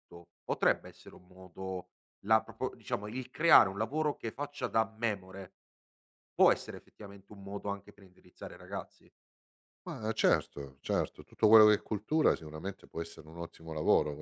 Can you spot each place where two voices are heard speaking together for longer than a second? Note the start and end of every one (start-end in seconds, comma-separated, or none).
none